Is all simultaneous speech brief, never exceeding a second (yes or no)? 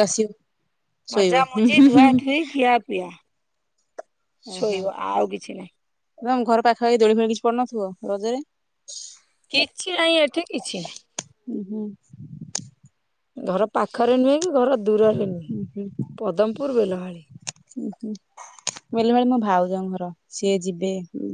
yes